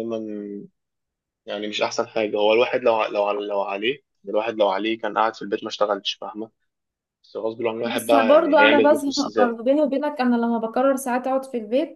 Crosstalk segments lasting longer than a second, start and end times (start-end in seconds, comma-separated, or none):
7.8-9.6